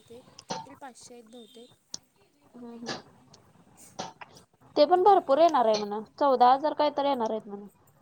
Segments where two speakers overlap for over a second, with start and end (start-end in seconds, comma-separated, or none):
none